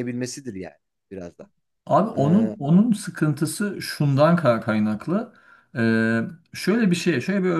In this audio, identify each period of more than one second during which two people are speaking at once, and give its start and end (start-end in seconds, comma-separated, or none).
none